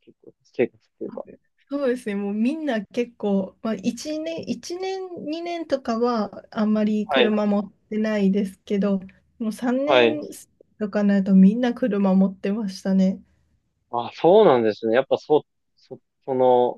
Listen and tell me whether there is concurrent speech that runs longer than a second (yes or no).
no